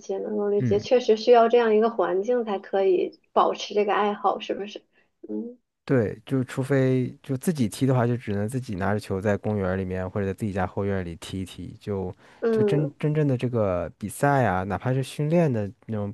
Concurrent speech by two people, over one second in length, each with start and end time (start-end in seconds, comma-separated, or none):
none